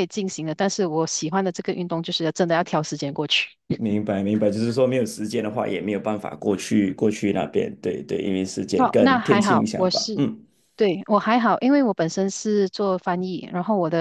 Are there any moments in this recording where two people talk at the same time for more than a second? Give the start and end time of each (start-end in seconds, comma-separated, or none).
8.8-10.3